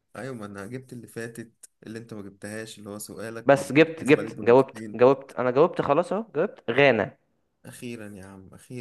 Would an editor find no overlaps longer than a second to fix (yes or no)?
no